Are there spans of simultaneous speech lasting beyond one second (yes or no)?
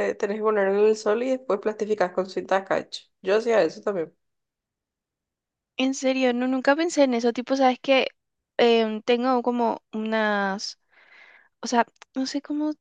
no